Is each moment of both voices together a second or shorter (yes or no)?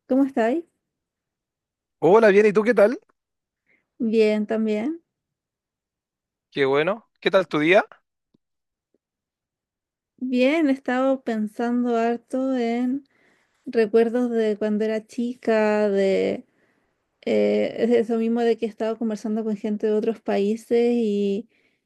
yes